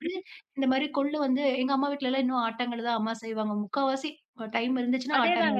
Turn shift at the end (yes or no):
yes